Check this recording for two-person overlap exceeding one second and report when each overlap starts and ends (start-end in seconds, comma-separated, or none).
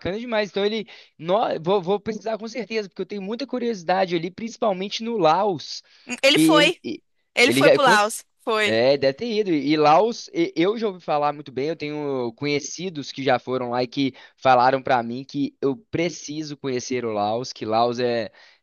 none